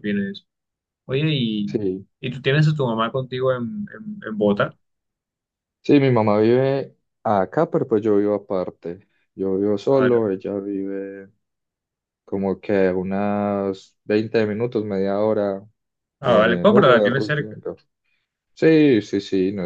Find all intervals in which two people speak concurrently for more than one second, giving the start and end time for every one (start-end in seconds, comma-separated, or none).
16.2-17.6